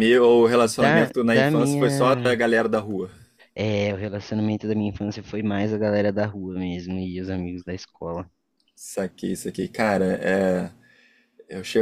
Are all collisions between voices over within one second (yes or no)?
no